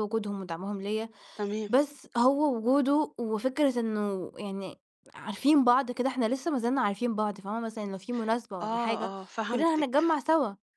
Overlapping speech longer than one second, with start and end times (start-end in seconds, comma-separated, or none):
8.6-10.0